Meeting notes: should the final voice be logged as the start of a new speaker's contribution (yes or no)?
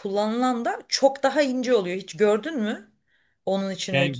yes